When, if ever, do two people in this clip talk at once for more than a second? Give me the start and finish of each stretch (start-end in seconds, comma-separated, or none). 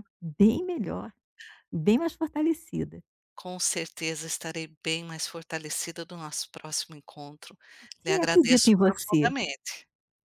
8.1-9.3